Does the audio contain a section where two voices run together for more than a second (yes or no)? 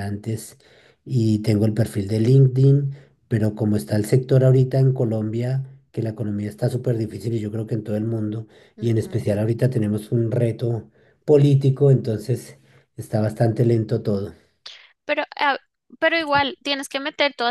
no